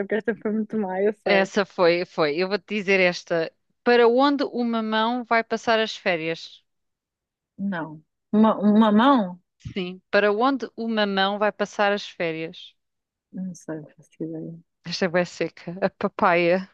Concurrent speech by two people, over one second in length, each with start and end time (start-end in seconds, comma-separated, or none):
none